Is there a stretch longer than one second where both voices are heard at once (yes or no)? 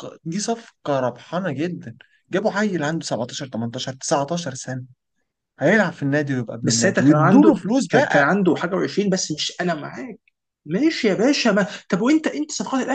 yes